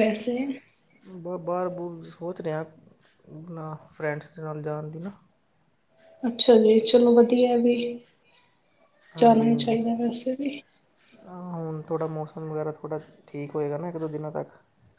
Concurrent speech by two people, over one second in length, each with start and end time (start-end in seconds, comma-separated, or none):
none